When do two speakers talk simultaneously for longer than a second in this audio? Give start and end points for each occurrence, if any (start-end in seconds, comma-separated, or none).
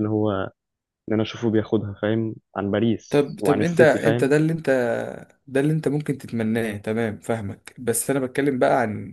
3.1-4.3